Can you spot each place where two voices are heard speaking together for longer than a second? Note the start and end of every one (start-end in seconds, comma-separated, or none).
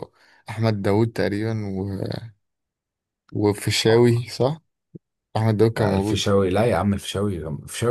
none